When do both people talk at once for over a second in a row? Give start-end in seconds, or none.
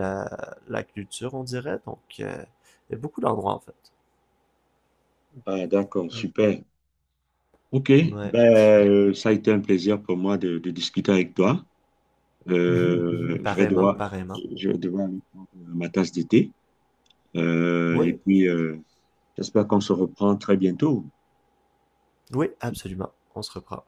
12.7-14.4